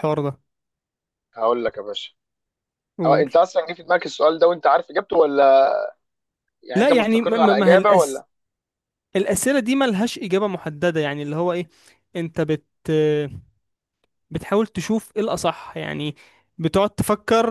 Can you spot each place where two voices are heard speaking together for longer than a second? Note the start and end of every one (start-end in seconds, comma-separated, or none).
6.7-8.2